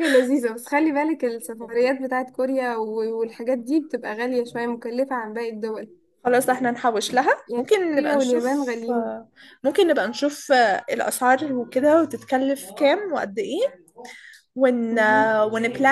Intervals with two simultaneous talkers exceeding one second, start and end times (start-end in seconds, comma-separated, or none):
7.5-9.1